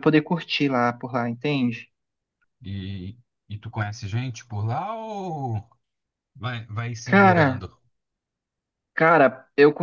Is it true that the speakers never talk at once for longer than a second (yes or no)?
yes